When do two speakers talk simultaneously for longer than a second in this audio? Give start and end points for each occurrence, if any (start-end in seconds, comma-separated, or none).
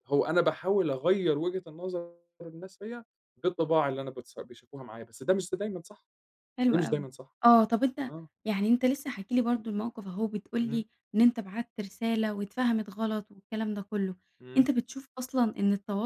none